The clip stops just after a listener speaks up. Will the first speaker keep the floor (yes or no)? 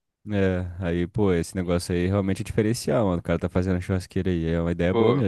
no